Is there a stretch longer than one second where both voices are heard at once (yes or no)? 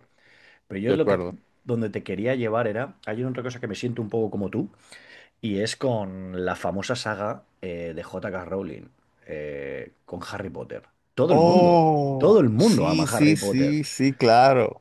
yes